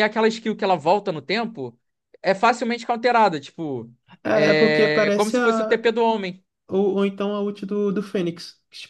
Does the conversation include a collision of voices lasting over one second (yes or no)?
yes